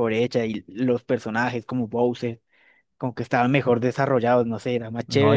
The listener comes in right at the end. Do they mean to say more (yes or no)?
yes